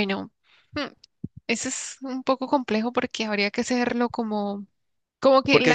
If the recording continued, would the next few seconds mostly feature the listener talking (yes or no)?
yes